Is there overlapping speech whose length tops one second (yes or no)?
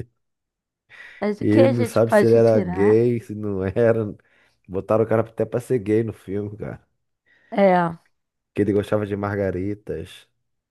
yes